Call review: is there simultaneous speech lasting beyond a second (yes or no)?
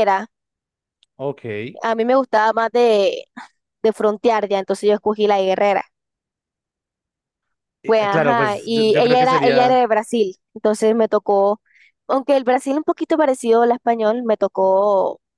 yes